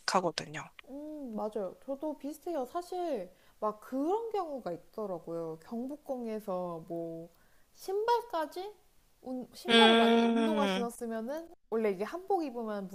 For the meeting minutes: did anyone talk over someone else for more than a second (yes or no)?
yes